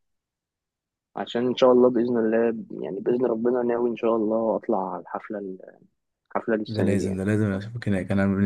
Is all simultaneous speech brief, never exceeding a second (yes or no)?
yes